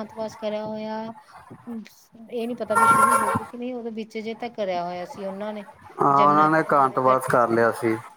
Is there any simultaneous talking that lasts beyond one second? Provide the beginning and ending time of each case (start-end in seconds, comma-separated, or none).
6.2-7.7